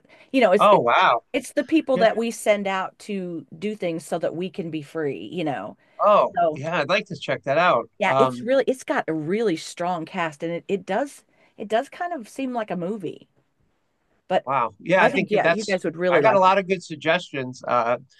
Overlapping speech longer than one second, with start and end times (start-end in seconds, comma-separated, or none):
15.0-16.6